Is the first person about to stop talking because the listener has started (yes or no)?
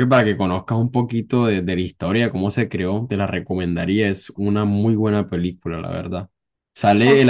no